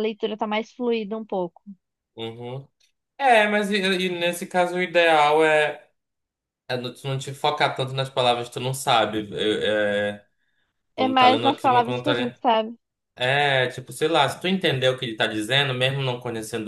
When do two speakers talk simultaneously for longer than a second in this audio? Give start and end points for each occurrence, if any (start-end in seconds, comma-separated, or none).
11.0-12.4